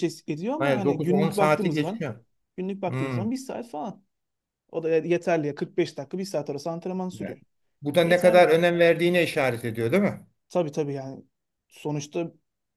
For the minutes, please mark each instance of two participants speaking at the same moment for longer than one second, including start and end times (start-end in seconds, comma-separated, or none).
0.6-2.1